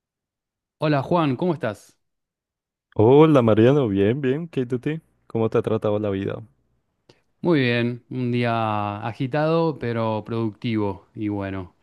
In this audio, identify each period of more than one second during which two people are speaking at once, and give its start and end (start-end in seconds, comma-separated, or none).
none